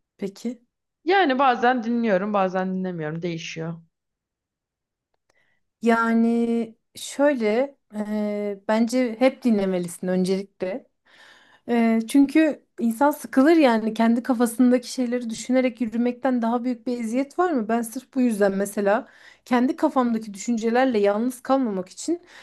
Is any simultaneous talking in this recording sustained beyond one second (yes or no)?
no